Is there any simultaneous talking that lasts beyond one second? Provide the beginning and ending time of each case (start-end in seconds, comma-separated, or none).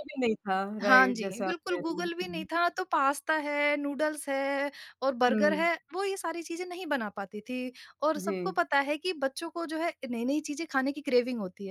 0.8-2.5